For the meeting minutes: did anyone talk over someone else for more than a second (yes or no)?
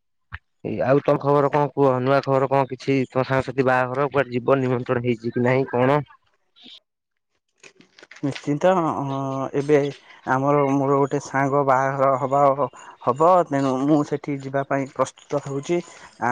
no